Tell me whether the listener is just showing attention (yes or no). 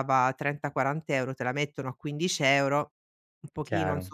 yes